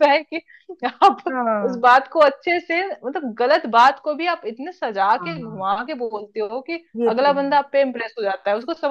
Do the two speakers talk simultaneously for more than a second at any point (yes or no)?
no